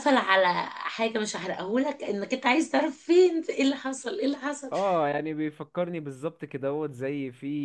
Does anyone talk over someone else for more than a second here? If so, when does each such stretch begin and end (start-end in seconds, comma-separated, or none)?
none